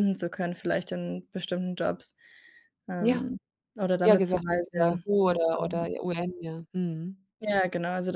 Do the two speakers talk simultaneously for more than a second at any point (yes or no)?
yes